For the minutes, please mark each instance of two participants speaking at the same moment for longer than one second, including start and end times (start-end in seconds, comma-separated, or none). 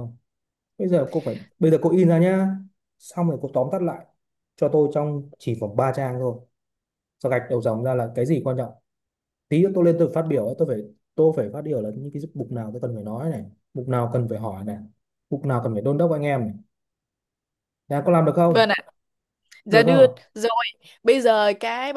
none